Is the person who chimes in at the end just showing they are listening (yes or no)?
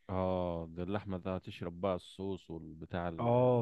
no